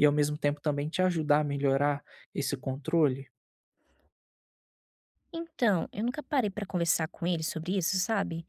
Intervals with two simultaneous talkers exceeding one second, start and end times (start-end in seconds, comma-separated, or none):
none